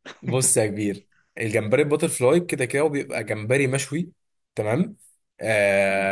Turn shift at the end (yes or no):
no